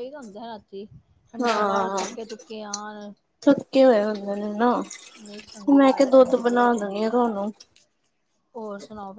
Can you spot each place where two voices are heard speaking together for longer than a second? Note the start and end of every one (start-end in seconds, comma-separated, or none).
5.8-7.4